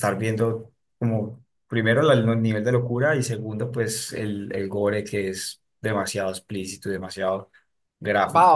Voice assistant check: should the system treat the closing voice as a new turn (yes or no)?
yes